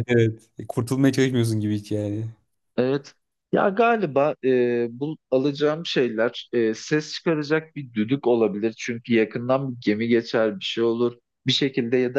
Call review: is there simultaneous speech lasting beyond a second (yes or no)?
no